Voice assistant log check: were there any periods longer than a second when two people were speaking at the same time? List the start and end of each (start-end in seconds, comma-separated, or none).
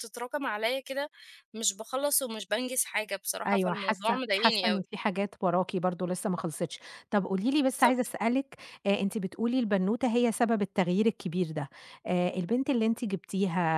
3.5-4.9